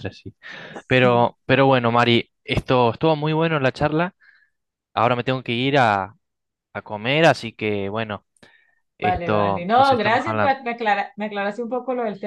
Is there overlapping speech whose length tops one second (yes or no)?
yes